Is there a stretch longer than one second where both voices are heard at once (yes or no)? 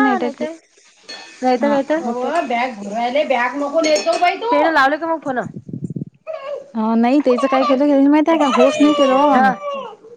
no